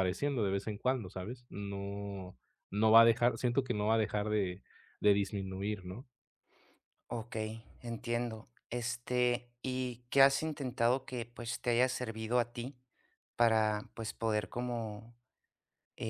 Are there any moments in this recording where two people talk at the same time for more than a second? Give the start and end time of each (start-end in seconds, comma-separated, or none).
none